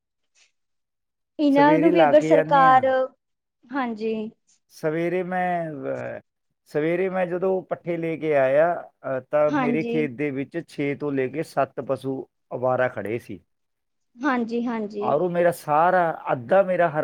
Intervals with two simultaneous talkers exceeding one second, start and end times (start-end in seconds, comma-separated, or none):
1.5-2.8